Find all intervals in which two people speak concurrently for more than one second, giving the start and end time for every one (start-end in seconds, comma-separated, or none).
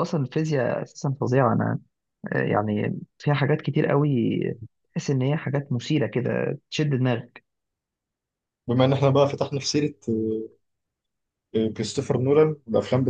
none